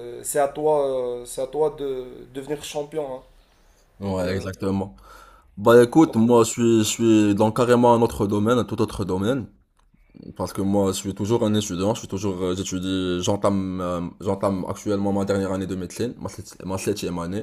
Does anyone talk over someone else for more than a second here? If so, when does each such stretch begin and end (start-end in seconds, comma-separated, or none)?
none